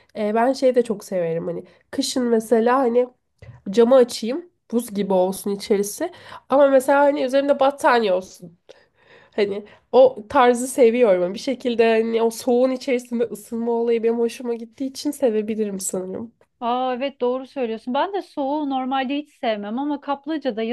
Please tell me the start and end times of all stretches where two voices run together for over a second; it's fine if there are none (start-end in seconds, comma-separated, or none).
none